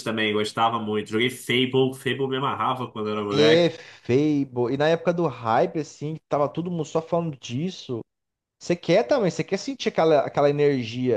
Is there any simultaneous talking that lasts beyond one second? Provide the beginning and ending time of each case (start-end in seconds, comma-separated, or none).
none